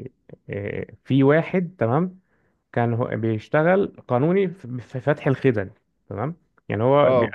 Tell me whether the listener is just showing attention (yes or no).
yes